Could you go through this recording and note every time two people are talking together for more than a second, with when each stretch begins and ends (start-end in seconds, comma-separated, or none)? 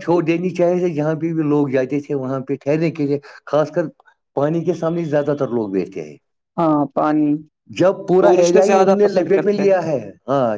8.2-9.8